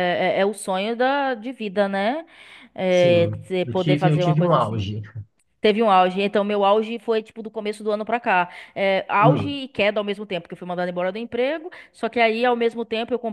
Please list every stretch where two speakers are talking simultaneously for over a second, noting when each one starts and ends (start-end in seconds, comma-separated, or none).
2.9-4.9